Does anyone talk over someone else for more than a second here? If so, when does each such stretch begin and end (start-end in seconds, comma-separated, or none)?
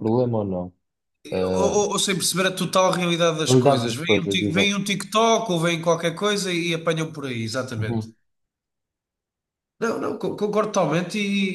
3.5-4.7